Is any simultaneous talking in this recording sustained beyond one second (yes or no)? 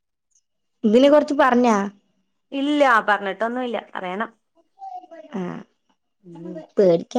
no